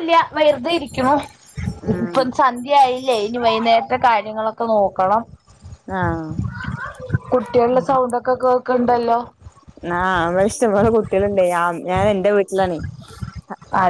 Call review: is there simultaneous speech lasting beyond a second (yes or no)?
no